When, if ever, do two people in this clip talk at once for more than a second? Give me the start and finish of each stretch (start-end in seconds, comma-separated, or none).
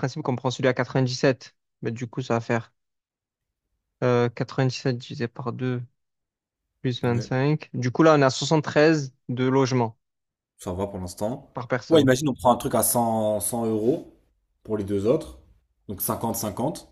none